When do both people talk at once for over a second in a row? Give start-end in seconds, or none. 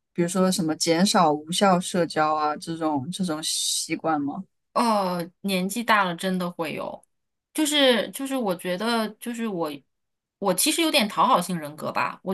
none